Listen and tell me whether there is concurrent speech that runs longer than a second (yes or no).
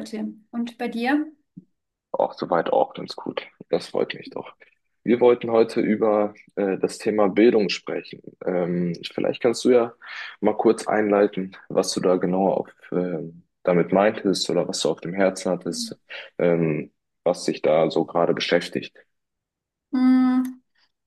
no